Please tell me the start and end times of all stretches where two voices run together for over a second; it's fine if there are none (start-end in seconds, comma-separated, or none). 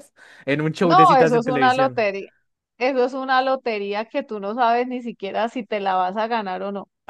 0.8-2.1